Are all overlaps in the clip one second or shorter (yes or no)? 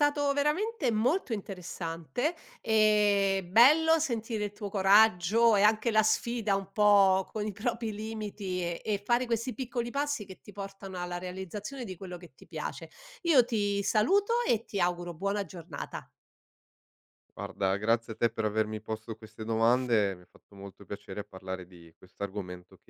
yes